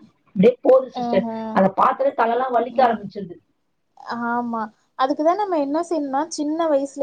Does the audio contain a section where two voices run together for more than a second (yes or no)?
no